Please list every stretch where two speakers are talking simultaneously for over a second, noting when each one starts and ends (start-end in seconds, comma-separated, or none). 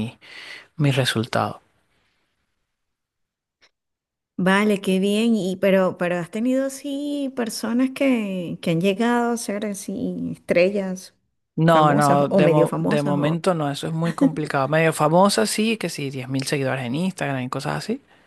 11.7-13.4